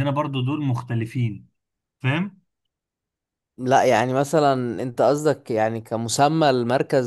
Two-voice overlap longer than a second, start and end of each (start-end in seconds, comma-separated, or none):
none